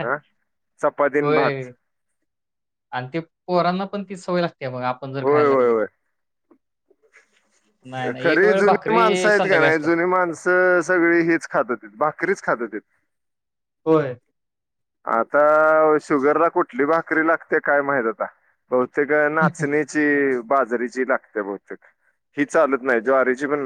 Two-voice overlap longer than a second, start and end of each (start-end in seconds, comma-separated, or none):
8.2-9.9